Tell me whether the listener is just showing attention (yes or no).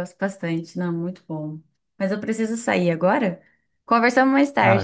no